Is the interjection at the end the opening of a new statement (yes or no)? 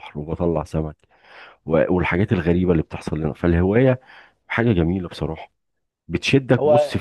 no